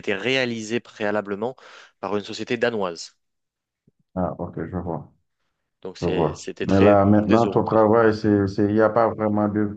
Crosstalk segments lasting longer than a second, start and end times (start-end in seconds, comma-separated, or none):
6.0-7.8